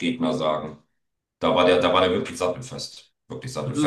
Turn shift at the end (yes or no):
no